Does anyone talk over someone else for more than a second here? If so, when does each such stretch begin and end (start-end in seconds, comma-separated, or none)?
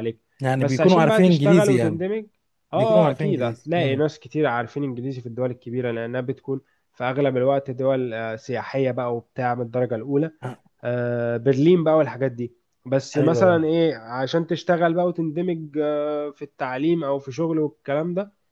0.6-2.0, 2.8-4.0